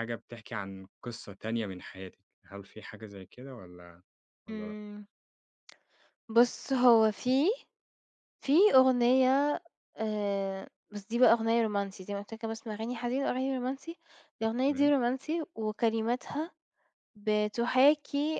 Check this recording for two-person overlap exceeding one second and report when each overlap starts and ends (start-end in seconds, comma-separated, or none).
none